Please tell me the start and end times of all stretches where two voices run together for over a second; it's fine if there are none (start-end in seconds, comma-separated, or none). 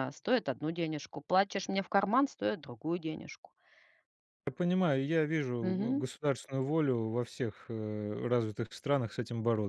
none